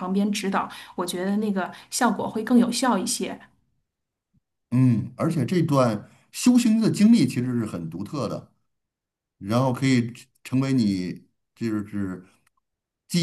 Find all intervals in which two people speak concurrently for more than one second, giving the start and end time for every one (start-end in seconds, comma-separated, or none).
none